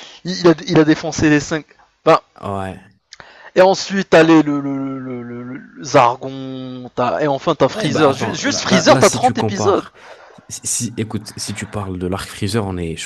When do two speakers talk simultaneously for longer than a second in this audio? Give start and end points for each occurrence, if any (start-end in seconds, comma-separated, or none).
7.8-9.8